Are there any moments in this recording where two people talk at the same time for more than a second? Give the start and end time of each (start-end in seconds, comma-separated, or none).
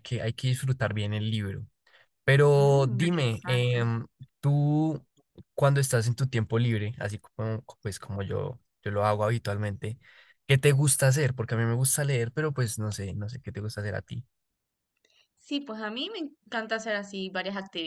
2.5-3.8